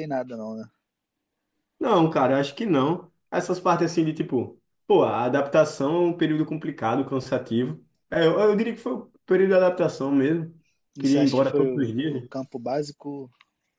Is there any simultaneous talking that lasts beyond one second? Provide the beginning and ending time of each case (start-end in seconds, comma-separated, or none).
11.0-12.3